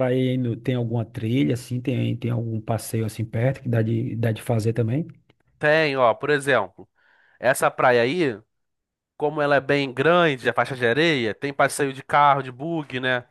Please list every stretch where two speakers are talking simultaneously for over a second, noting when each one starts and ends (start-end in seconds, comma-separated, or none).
none